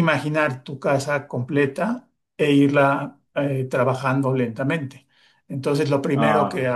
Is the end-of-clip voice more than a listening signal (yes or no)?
no